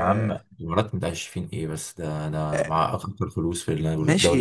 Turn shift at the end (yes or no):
yes